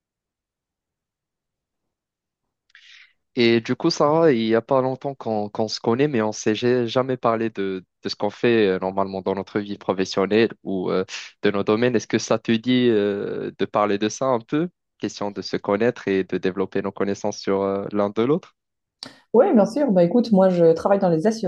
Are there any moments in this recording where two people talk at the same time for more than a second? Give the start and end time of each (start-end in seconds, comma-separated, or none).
none